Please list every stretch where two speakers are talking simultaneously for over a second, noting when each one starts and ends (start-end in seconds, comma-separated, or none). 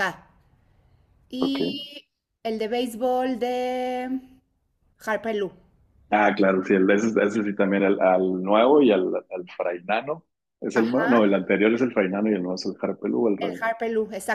none